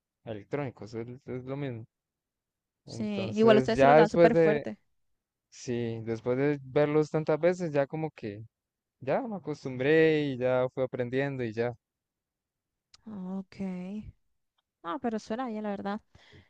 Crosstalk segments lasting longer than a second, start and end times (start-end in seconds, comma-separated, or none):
2.9-4.7